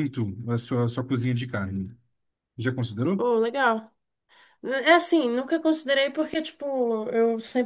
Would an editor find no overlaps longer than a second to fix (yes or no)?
yes